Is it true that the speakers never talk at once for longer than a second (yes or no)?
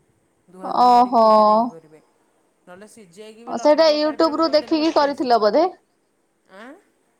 no